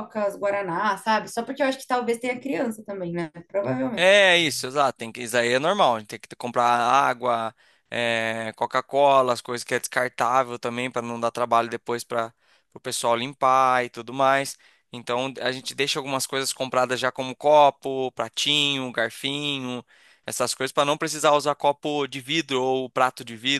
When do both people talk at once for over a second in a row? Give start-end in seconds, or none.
none